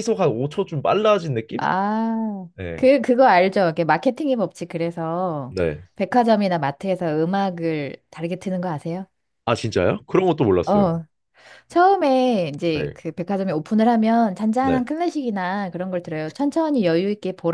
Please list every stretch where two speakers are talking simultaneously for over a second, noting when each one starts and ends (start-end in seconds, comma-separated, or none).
none